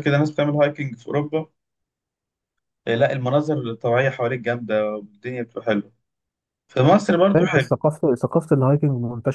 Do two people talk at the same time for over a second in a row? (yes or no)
no